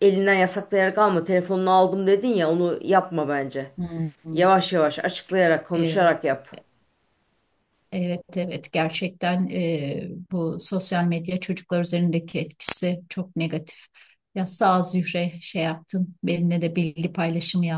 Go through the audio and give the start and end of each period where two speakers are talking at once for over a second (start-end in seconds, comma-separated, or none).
none